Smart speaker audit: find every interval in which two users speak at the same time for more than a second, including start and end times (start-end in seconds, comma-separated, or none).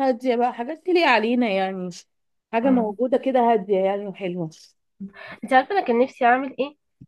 none